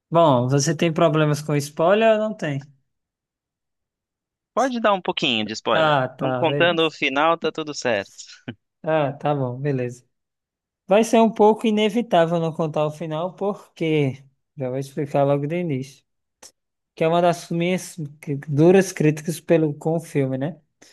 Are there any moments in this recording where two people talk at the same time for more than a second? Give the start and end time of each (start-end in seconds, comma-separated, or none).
5.7-6.9